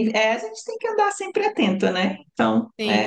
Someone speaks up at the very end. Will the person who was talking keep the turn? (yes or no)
no